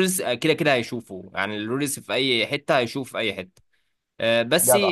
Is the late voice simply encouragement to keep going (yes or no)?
yes